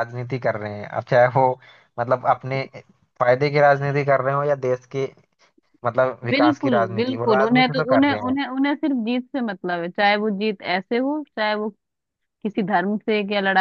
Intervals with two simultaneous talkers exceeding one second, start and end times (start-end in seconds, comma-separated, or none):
6.3-8.4